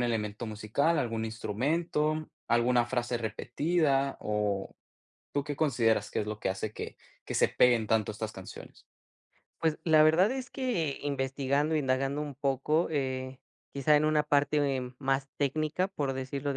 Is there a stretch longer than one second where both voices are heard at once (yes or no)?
no